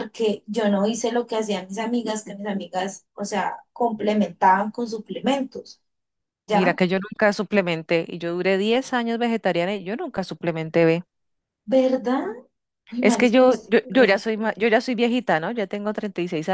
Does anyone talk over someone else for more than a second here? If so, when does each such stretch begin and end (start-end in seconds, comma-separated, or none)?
13.0-14.3